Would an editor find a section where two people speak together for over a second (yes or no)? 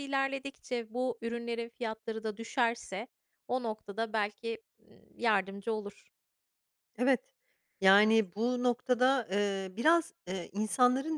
no